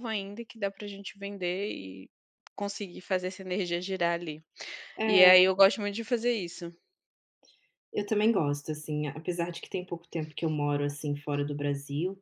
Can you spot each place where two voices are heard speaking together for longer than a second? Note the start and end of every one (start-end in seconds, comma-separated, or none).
none